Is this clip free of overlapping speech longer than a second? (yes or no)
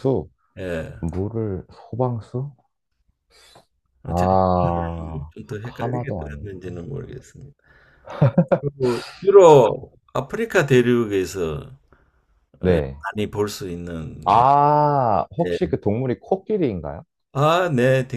no